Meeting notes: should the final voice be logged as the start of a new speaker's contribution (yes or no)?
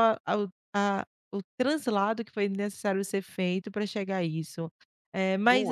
no